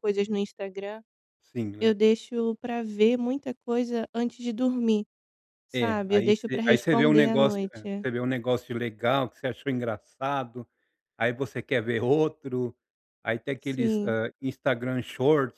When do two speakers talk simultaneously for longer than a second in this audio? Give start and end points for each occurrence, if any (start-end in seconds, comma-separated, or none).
5.7-8.0